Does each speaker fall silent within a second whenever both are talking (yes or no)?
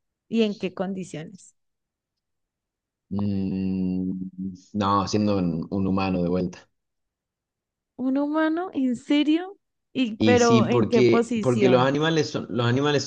no